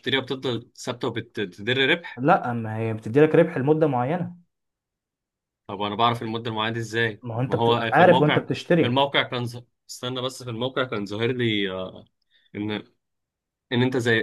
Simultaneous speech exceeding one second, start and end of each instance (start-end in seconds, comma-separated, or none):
7.2-9.0